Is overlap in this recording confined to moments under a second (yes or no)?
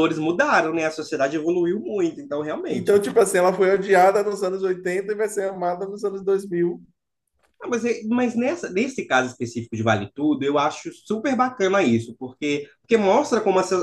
yes